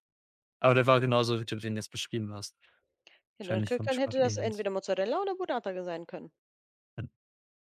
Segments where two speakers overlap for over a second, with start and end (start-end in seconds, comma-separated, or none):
3.4-4.7